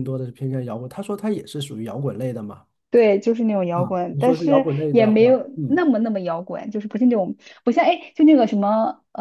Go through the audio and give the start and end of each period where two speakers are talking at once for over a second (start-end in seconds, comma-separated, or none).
3.7-5.8